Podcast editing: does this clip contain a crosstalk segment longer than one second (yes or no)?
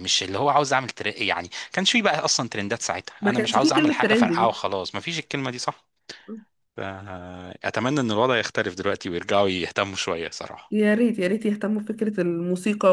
yes